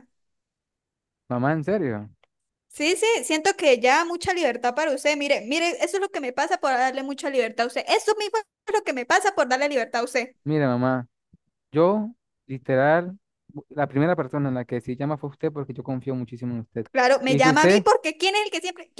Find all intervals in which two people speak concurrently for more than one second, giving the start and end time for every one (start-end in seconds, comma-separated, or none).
none